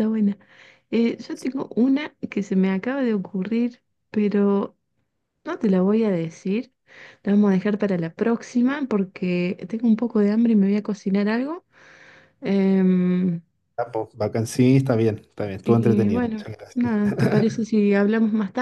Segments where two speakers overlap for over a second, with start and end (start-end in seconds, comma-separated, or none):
15.7-17.0